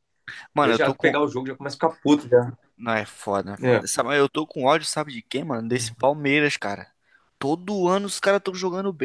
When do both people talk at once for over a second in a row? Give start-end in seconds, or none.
none